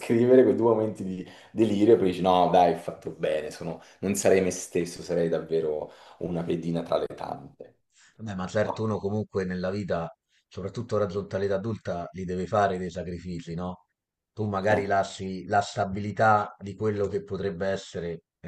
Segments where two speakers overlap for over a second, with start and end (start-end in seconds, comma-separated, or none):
none